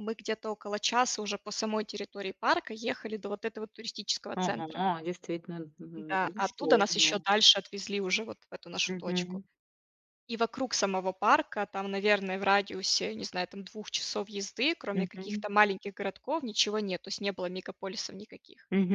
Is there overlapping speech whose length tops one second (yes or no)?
yes